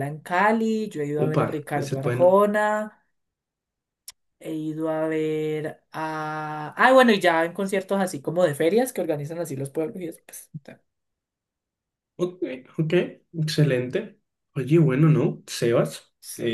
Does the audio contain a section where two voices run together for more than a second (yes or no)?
yes